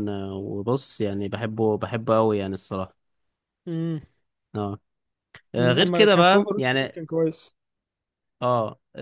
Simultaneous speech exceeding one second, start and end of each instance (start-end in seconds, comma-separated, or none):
5.6-7.0